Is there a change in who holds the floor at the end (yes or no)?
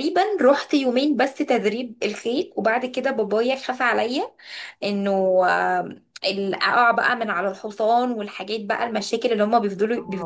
yes